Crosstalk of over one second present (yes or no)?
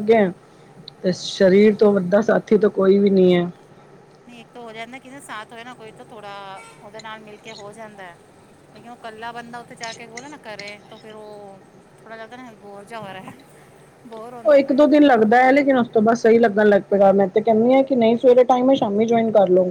no